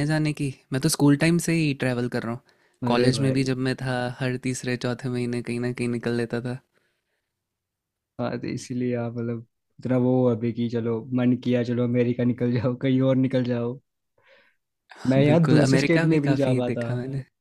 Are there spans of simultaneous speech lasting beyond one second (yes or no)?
yes